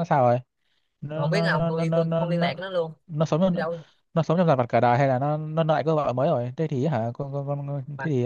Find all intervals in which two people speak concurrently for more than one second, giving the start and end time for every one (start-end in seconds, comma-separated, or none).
1.1-2.5